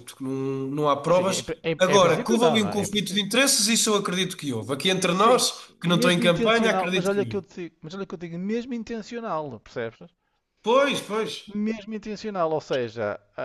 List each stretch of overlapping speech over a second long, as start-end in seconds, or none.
1.1-3.2, 5.2-7.4